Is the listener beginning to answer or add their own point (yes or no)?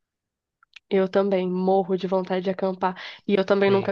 no